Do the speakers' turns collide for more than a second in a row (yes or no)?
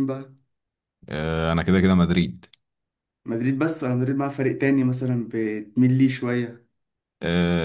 no